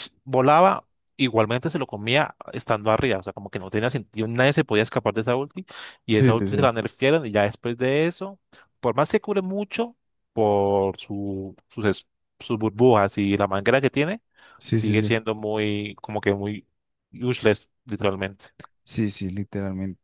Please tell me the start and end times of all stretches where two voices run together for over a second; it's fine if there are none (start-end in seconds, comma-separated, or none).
none